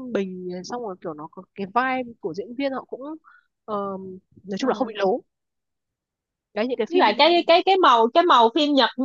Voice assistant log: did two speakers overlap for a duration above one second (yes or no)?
no